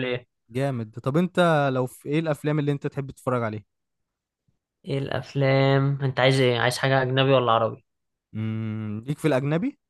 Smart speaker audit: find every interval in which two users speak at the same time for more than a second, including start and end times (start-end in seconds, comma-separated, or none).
none